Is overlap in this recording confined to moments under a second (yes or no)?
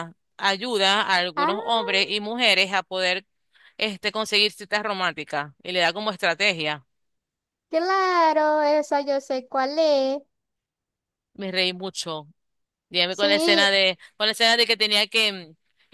yes